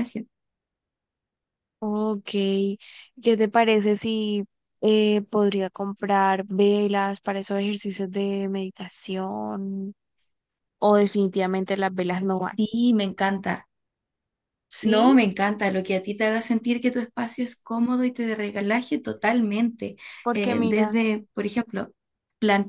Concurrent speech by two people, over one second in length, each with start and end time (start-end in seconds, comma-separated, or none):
none